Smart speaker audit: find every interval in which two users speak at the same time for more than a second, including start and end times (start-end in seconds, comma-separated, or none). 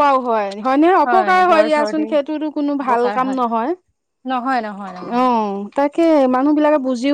1.1-3.5